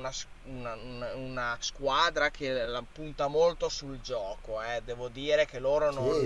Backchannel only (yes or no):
no